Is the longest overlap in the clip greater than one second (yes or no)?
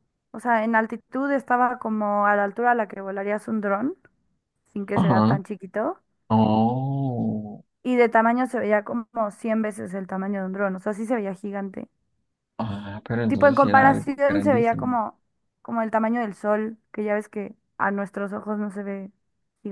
yes